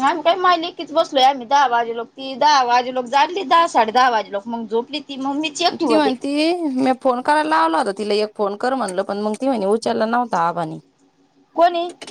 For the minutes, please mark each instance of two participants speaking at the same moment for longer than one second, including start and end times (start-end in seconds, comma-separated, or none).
none